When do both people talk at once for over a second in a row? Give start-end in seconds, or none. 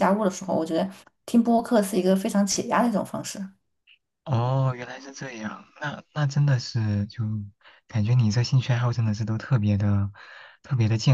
none